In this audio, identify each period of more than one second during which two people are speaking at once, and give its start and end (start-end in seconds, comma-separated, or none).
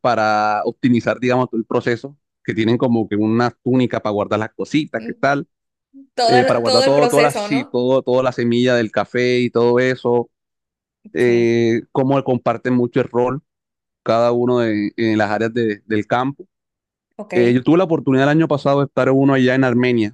6.2-7.8